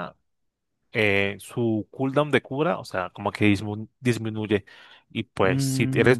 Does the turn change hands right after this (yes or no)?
no